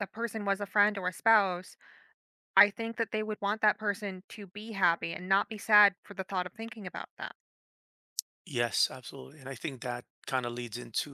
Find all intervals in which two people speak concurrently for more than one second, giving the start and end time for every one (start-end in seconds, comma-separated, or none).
none